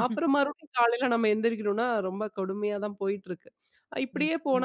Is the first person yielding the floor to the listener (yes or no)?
no